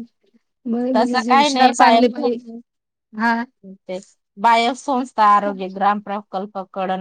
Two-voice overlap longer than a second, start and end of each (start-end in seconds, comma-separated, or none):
1.0-2.3